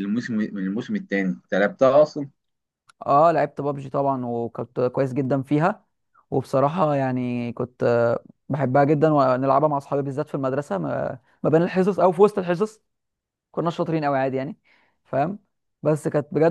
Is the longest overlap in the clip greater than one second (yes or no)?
no